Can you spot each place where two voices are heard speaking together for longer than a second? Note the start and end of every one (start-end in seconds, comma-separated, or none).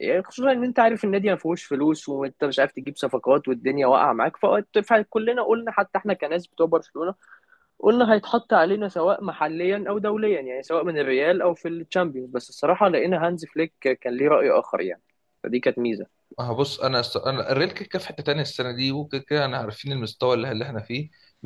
none